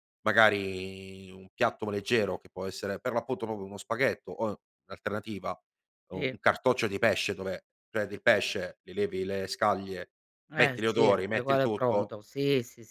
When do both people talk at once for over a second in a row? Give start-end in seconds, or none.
10.6-12.1